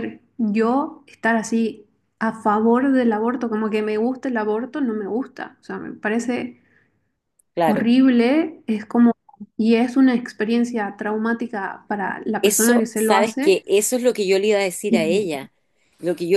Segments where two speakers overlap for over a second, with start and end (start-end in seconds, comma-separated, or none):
12.4-13.6